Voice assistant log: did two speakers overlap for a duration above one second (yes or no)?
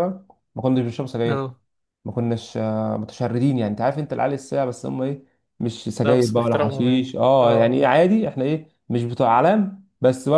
yes